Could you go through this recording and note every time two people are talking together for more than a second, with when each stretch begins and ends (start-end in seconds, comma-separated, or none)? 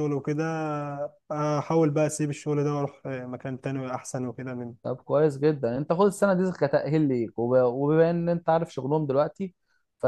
none